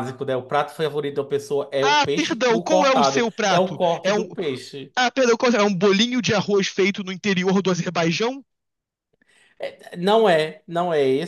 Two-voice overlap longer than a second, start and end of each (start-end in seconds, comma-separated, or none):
1.8-4.3